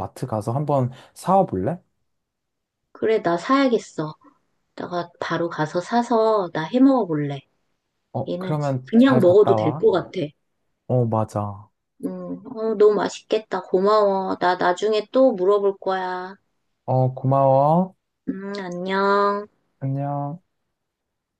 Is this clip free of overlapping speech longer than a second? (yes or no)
no